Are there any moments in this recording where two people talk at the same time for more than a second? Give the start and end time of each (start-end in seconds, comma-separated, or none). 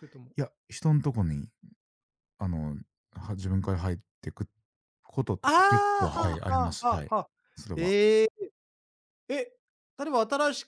5.4-7.1